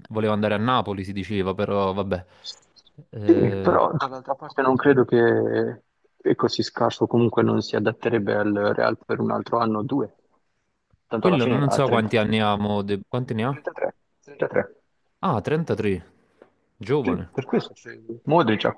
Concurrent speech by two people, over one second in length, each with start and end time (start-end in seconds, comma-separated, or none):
11.2-12.7